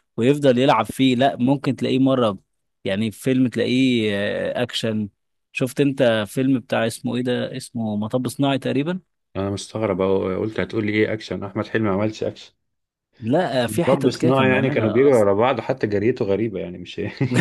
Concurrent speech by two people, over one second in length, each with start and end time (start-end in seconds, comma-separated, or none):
13.7-15.3